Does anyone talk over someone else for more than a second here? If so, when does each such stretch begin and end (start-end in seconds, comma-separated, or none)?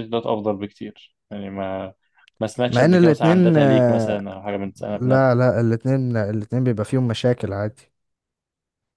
2.7-4.2